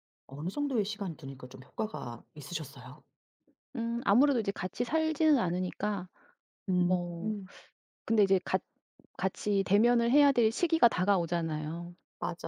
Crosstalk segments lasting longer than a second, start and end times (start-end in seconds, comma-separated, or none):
none